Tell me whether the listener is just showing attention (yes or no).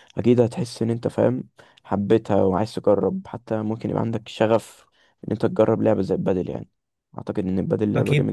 no